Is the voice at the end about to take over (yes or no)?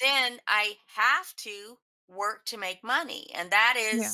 no